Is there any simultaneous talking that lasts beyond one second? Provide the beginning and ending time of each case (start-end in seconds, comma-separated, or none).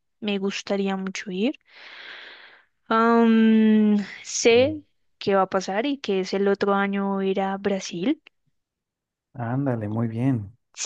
none